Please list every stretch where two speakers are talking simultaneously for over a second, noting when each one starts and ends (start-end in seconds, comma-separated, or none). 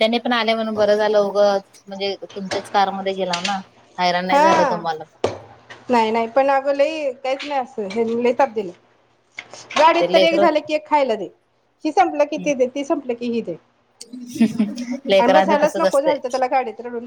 15.2-16.5